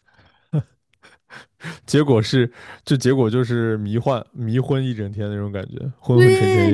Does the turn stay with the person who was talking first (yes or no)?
no